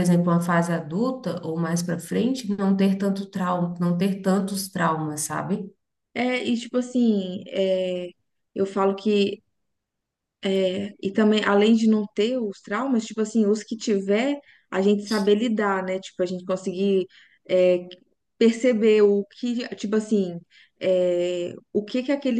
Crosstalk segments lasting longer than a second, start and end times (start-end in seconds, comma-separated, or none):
none